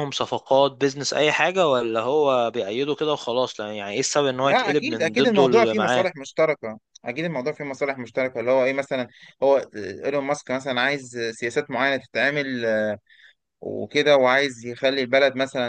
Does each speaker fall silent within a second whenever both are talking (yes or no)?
no